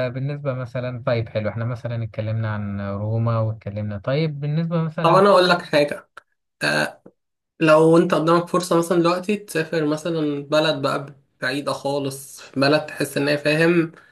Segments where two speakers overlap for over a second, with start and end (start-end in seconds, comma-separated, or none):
none